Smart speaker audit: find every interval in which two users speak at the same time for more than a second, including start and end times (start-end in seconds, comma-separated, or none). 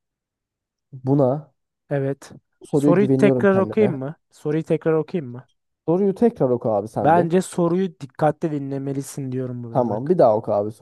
2.7-4.0